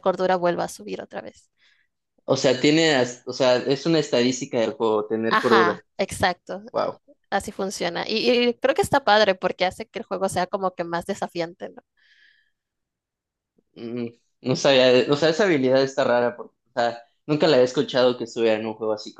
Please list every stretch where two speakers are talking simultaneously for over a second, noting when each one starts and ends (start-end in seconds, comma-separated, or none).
none